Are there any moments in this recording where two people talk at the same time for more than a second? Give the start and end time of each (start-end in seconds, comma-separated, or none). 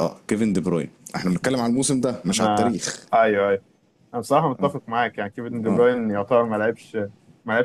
none